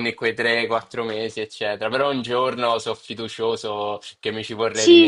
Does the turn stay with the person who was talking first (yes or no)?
no